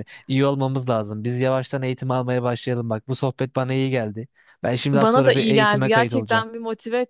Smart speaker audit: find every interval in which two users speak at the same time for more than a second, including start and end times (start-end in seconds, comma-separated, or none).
4.9-6.4